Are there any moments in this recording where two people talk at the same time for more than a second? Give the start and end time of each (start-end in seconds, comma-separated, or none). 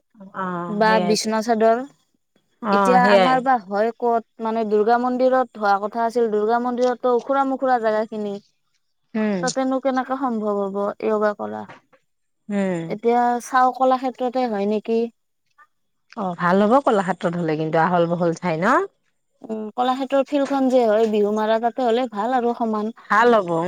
none